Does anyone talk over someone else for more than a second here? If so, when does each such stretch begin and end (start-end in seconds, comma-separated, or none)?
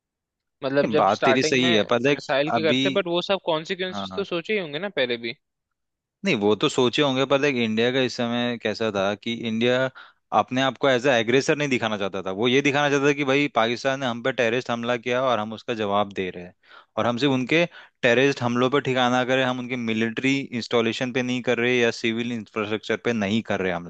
0.8-2.8